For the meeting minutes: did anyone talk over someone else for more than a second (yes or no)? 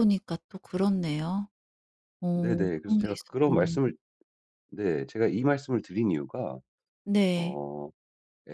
yes